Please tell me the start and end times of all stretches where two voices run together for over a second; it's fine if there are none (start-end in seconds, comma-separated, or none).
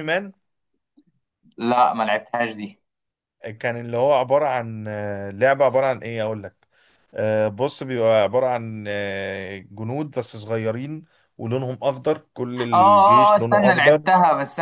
12.5-14.0